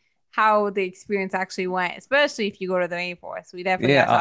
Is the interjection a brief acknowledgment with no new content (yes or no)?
no